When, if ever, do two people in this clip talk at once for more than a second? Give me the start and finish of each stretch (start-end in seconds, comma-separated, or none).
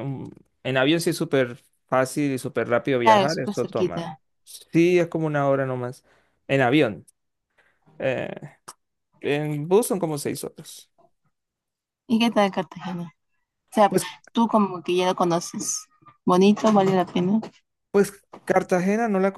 3.0-4.2